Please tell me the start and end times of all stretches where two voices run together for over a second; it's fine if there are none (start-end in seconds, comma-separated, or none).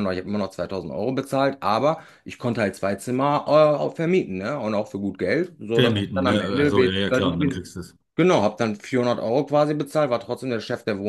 5.7-7.7